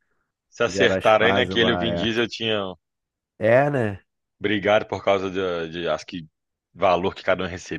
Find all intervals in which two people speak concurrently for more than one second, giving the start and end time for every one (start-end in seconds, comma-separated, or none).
0.7-2.1